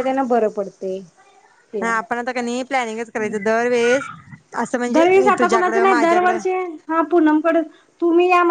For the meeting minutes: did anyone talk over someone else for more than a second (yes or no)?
yes